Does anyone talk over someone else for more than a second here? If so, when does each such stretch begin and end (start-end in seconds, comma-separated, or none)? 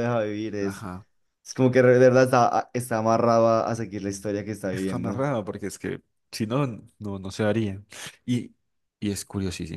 none